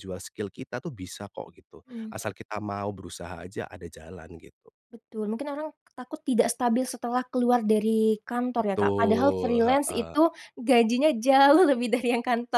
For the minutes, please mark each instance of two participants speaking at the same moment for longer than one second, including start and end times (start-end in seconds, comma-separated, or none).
8.6-10.2